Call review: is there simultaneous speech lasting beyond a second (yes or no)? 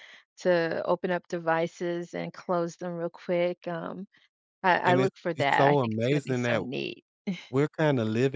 yes